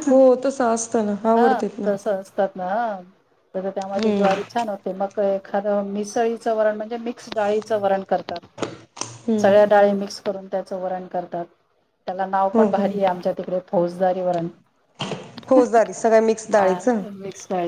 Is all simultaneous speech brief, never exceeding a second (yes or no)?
no